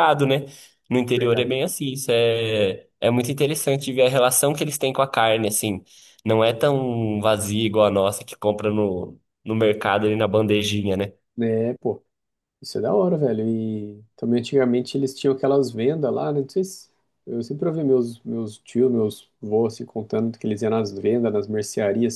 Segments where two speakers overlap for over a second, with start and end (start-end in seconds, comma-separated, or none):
none